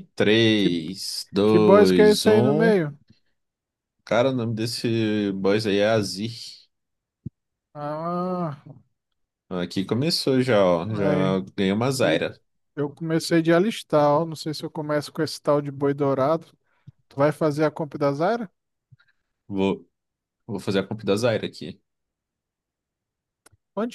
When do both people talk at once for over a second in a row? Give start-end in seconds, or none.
1.4-2.8